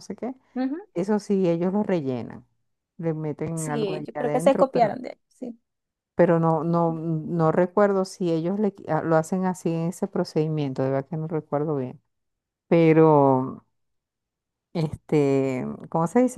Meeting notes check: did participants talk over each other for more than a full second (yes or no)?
yes